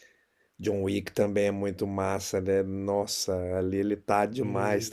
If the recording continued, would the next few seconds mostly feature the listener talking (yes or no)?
no